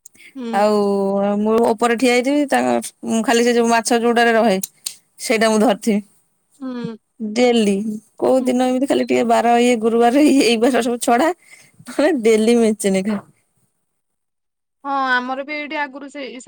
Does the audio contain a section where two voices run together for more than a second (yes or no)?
no